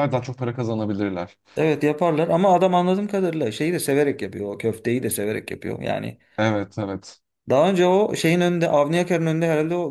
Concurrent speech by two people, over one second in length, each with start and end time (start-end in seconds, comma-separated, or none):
none